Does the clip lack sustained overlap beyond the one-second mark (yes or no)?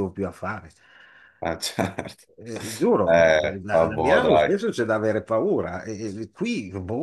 no